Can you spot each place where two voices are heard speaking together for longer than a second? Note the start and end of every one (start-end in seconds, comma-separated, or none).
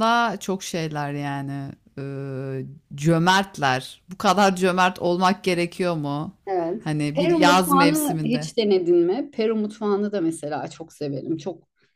6.8-8.5